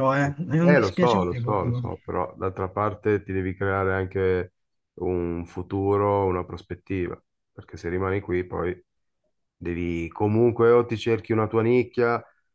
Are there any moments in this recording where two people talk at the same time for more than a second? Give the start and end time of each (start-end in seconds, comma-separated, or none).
0.6-2.0